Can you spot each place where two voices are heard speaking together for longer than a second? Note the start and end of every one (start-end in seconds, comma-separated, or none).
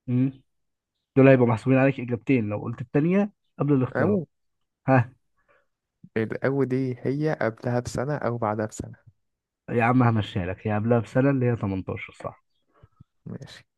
none